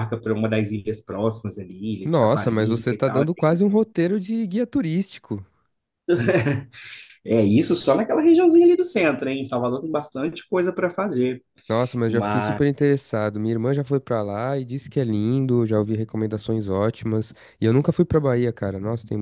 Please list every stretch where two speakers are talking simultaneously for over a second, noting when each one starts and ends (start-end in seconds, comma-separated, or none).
2.0-3.3